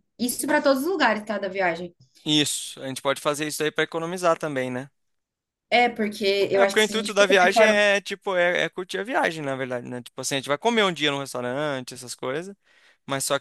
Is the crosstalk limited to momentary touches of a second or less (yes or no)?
no